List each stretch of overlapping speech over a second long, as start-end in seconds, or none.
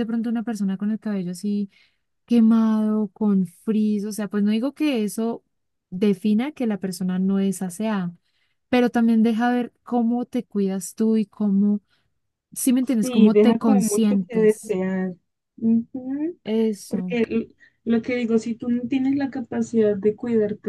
13.0-14.8